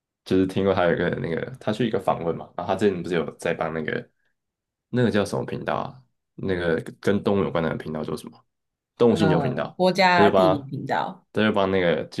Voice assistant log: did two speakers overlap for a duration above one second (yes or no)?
yes